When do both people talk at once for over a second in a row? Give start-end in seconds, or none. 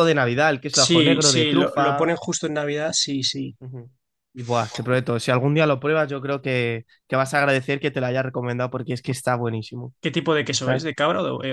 0.7-2.1